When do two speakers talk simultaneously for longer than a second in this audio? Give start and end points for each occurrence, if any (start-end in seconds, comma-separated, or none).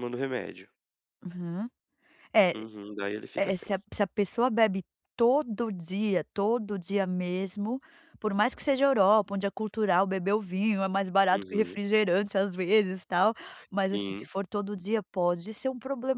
none